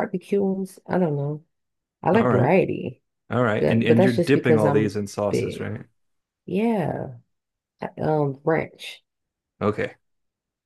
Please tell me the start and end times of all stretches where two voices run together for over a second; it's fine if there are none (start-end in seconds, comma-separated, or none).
3.6-5.7